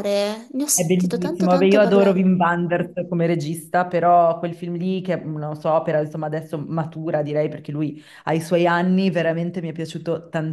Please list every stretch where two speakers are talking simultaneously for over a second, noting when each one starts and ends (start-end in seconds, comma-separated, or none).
0.8-2.2